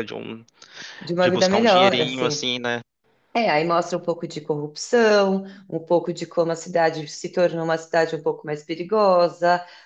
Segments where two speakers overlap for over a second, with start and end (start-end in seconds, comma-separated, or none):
1.2-2.5